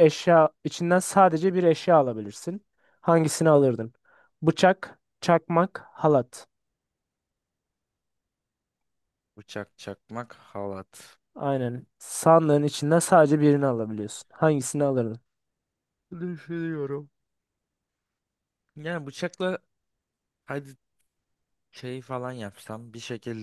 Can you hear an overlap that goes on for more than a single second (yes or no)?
no